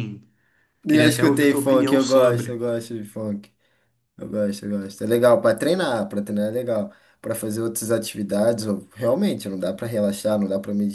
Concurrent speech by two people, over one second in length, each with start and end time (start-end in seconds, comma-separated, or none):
0.9-2.6